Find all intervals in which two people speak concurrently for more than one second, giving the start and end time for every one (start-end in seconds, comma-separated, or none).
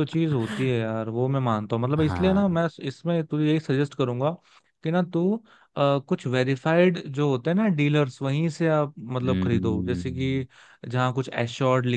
9.2-10.4